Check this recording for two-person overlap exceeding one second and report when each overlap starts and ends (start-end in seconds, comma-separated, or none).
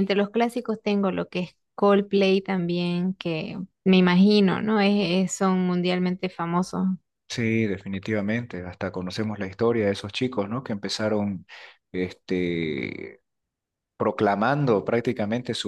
none